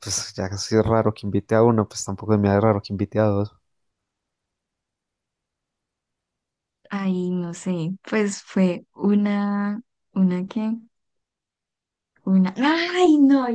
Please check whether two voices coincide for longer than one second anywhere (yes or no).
no